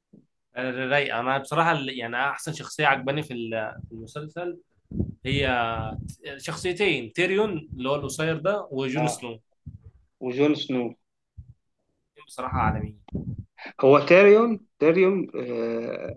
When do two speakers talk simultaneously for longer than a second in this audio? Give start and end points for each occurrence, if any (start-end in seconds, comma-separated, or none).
none